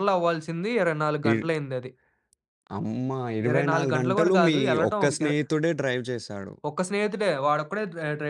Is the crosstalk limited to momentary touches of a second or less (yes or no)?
no